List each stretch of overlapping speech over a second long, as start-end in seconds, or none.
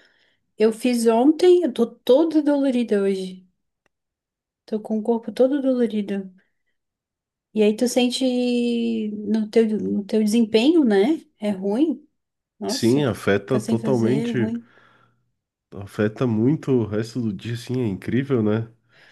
12.7-14.5